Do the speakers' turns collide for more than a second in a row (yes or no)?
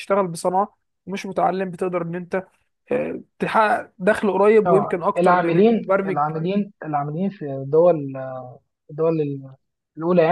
yes